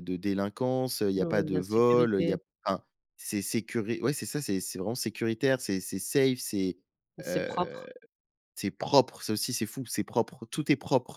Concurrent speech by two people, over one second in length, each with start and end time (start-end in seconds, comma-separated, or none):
1.2-2.4